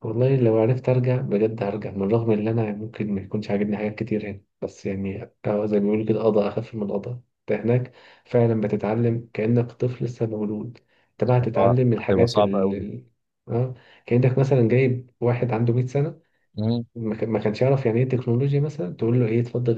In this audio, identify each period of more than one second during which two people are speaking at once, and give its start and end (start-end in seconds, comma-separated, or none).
11.6-12.8